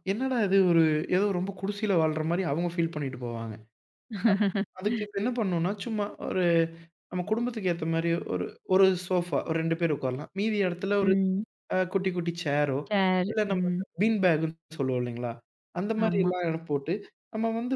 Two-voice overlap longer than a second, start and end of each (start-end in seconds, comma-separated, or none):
none